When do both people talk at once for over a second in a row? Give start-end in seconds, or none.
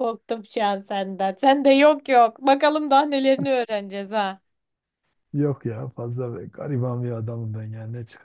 none